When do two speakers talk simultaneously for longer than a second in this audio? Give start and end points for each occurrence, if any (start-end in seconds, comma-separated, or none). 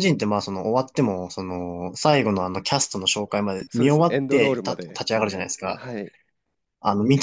3.7-5.0